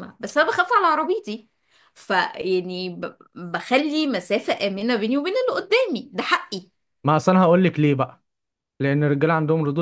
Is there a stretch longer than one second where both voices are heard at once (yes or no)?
no